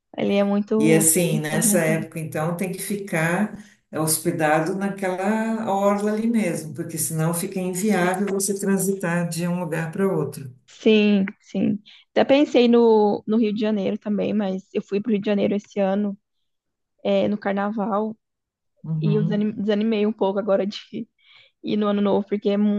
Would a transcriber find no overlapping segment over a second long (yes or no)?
no